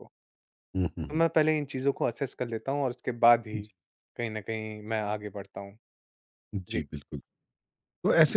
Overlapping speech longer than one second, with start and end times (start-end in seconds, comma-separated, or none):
none